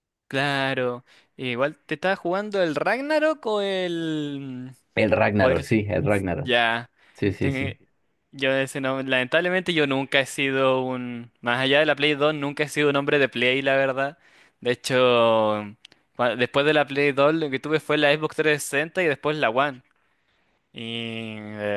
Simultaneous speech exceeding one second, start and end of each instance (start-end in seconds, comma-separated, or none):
none